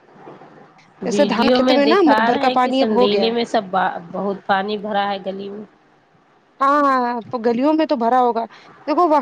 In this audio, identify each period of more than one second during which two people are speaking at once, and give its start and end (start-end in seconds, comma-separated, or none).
1.1-3.3